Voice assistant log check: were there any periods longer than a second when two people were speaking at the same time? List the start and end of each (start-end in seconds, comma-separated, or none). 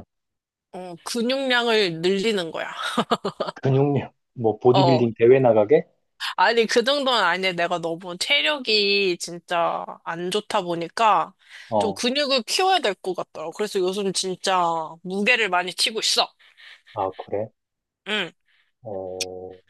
none